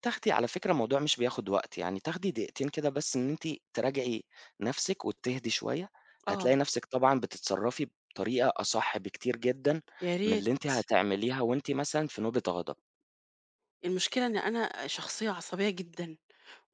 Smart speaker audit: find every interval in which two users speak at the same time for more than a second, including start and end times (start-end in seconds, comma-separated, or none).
none